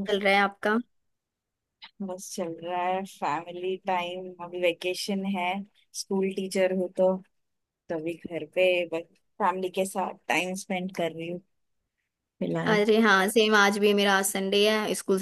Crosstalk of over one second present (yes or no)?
no